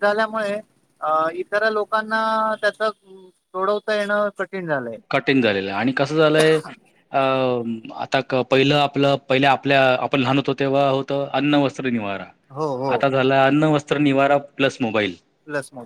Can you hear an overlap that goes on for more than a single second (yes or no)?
no